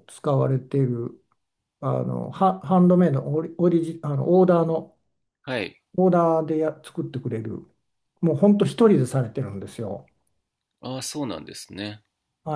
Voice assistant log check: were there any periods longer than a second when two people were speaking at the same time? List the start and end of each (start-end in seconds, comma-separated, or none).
none